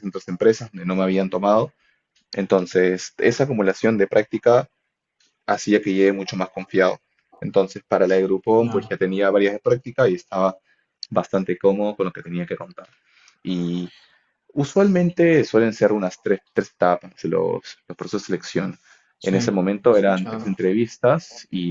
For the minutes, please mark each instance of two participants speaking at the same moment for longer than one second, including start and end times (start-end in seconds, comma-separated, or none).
19.2-20.6